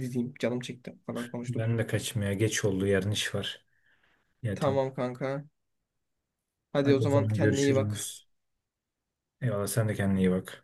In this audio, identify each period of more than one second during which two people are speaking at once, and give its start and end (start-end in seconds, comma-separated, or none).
6.8-8.1